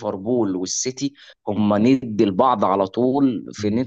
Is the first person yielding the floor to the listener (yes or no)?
no